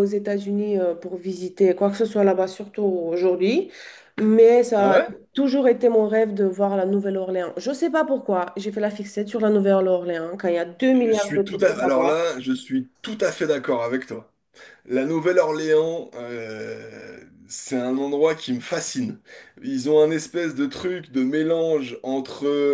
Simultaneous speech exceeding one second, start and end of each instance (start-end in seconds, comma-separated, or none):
10.9-12.3